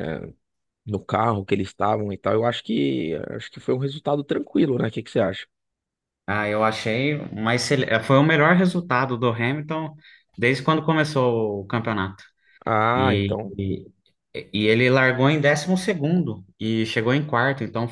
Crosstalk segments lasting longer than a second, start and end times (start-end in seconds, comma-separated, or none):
none